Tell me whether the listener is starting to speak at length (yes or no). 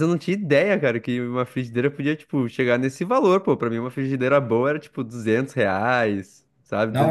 yes